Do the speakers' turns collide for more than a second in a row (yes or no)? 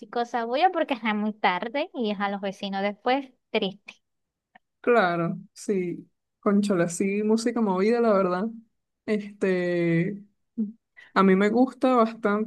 no